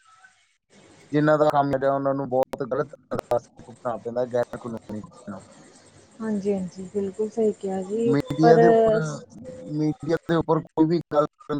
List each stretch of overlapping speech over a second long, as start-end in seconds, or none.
none